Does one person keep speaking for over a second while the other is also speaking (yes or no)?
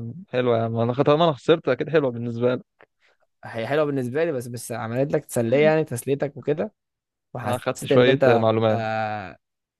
yes